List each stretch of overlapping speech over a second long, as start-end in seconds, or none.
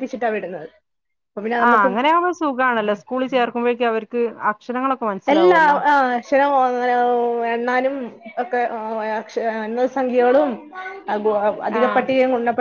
none